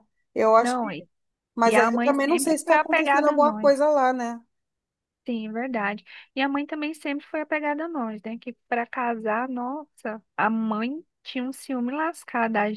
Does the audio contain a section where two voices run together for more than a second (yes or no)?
yes